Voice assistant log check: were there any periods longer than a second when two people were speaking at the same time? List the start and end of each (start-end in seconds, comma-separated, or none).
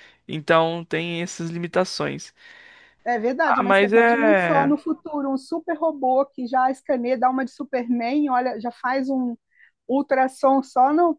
3.4-4.7